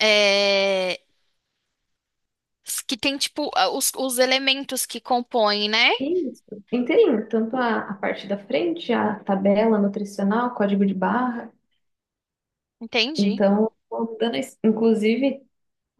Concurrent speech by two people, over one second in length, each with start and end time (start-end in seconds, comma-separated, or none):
none